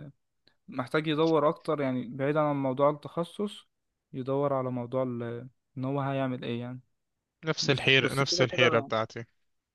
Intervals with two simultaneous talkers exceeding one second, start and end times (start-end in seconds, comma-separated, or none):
7.6-8.9